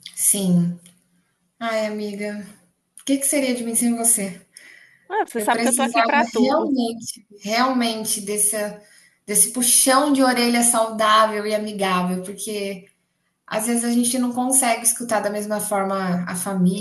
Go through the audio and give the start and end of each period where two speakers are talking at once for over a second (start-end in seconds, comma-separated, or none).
5.3-6.7